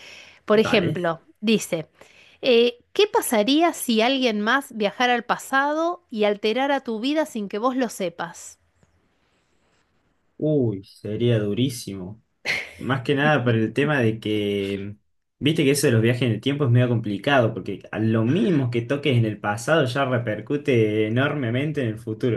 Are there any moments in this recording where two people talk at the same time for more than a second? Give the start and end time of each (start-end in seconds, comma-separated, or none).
none